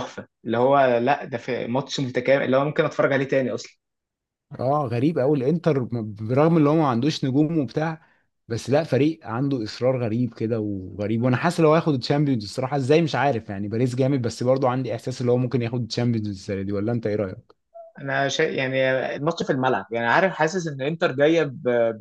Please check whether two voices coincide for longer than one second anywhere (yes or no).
no